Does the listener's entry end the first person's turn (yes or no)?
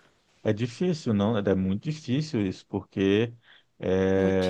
no